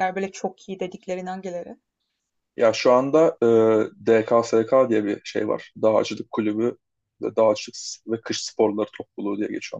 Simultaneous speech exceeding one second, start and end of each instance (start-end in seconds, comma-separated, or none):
none